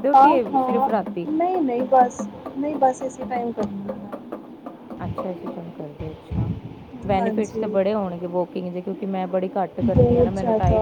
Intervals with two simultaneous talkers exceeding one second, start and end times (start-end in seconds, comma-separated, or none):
none